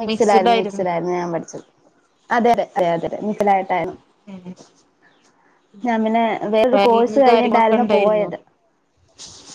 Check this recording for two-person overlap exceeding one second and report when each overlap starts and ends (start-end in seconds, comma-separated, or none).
6.7-8.3